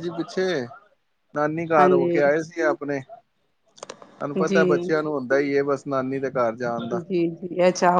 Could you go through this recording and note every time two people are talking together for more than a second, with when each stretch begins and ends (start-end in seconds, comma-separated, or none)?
none